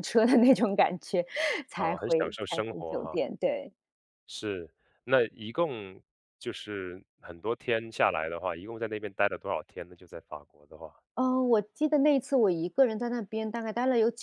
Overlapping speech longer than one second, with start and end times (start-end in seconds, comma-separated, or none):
1.8-3.3